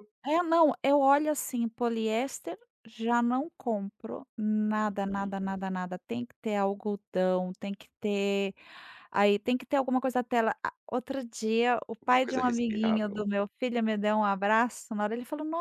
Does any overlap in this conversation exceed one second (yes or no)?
yes